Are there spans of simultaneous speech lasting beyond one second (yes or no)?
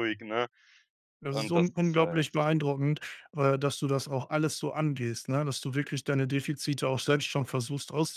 yes